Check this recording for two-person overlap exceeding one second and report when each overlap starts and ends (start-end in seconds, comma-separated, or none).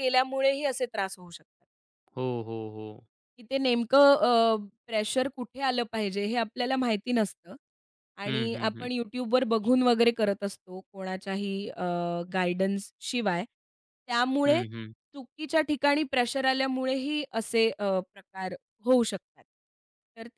none